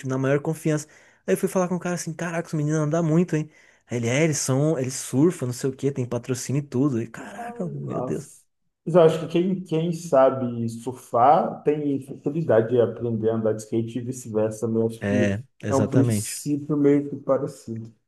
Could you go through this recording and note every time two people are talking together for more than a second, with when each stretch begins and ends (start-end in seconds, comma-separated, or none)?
15.0-16.4